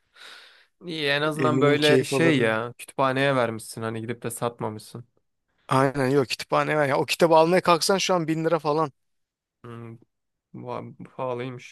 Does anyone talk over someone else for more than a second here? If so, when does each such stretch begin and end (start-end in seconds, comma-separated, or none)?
1.4-2.6